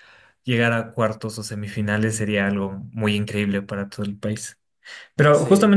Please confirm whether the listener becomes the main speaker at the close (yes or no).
no